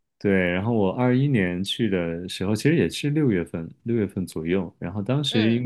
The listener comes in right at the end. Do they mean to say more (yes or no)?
no